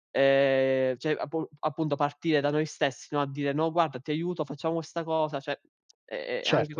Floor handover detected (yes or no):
yes